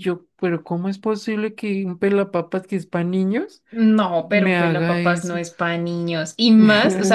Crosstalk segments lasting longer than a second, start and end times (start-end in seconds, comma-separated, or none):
4.2-5.4